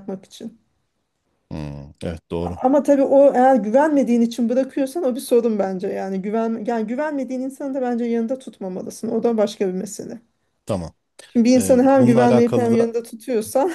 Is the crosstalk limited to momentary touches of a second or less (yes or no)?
no